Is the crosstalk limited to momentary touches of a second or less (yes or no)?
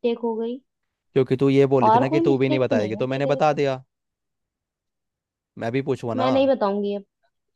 no